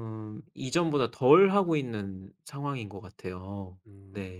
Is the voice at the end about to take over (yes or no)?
yes